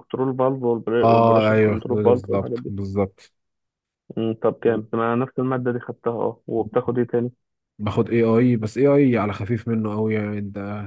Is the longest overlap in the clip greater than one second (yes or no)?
yes